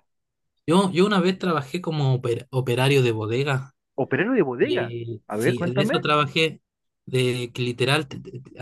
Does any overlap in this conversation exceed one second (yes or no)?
yes